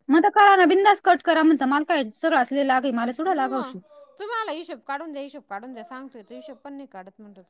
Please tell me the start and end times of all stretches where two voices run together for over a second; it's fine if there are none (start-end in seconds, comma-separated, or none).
none